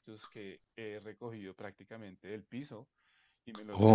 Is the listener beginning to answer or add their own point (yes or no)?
no